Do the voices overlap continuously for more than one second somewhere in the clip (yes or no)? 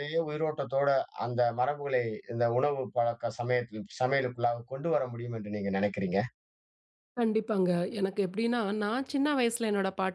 no